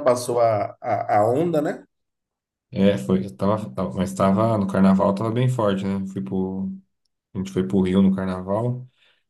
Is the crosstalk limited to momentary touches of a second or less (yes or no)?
yes